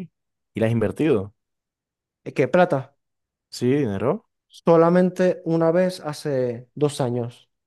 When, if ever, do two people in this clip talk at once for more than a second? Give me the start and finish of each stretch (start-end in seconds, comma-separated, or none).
none